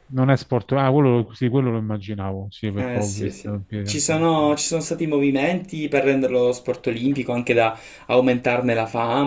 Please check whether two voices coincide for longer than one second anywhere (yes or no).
yes